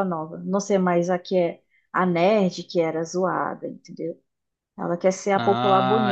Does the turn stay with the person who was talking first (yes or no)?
no